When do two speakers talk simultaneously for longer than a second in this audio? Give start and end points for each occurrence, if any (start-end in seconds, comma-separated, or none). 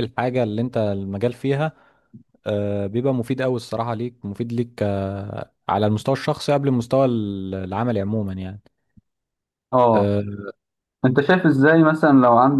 none